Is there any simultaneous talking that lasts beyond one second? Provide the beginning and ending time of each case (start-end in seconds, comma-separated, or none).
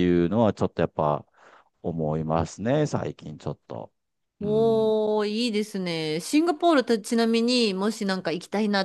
none